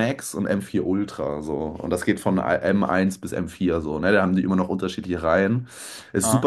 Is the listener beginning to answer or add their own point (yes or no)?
no